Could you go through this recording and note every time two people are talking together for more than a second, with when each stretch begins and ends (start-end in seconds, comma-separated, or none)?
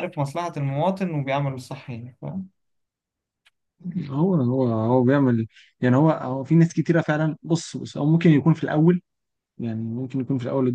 none